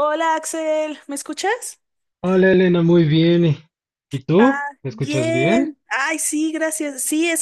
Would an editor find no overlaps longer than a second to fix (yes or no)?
no